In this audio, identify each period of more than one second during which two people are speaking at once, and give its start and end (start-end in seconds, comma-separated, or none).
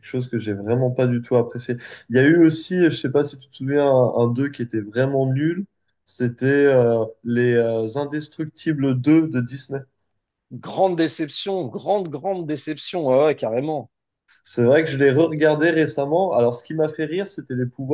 none